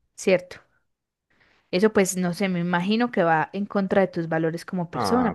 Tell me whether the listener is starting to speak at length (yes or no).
yes